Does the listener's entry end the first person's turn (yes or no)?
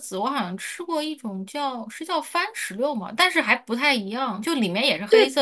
no